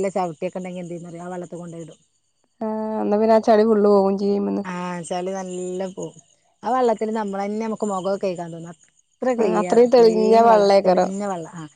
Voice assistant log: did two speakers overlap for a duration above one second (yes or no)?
yes